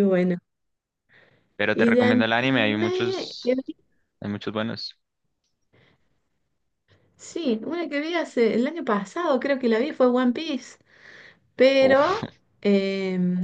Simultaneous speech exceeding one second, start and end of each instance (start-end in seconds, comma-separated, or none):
1.7-3.7